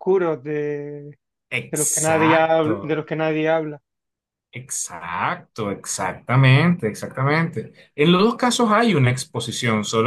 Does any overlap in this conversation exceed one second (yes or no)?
yes